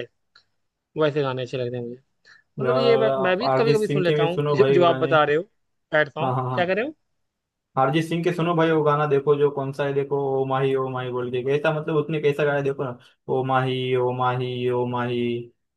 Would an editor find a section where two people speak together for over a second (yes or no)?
yes